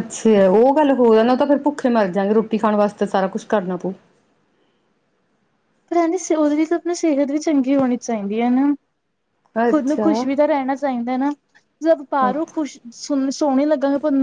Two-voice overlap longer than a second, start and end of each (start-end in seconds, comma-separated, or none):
none